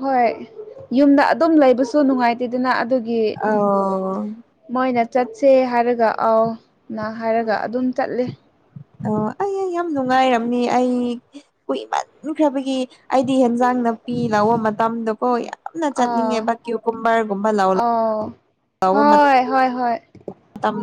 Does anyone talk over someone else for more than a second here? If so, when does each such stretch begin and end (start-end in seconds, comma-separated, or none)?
none